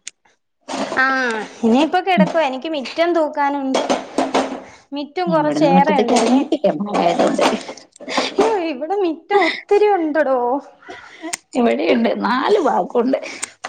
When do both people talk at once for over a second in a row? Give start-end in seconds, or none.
none